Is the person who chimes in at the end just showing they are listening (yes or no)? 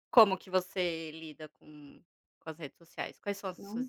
no